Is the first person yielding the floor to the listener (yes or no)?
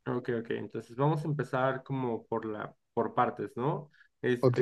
no